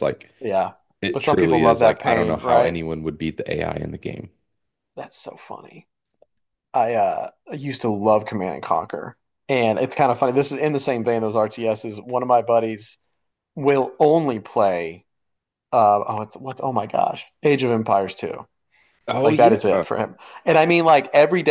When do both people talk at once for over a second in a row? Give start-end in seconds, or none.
1.1-2.8